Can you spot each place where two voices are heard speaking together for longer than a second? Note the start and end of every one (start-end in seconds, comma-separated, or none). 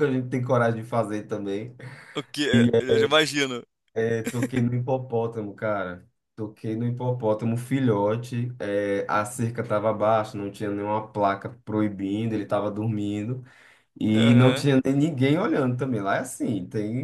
none